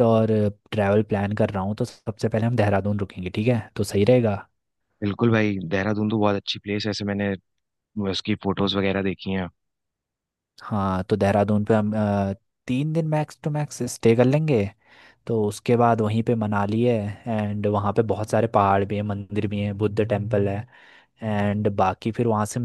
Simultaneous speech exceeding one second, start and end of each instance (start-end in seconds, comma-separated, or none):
none